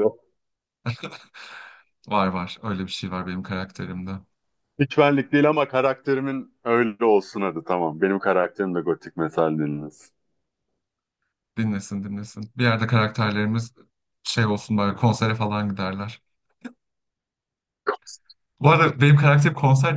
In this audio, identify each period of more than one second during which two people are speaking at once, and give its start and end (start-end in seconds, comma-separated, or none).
none